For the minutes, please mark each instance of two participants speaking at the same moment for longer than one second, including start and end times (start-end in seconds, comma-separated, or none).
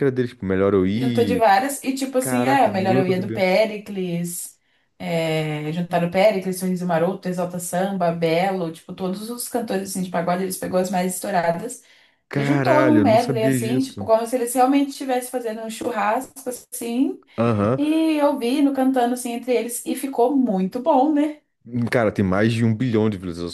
2.2-3.5, 12.3-14.1